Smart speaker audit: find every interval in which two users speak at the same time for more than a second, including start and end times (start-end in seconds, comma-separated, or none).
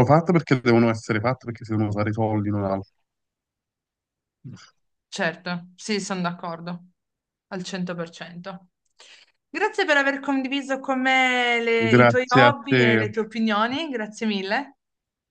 11.8-13.0